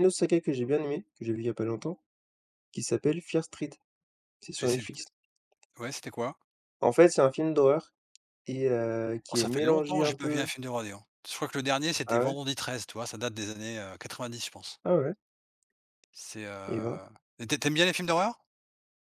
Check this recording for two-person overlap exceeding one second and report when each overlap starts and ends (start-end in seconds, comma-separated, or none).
9.3-10.5